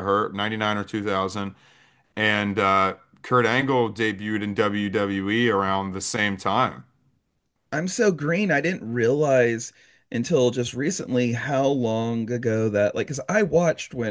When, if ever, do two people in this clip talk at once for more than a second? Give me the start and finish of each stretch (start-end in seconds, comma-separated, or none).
none